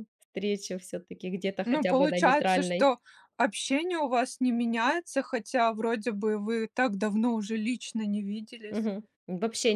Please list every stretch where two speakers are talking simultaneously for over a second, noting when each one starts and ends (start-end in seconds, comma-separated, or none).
1.6-2.9